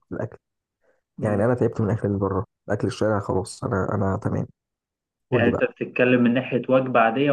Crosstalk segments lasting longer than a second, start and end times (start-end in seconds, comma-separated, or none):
none